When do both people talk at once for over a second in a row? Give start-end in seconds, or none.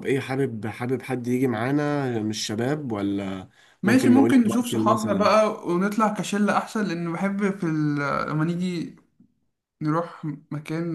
3.9-5.3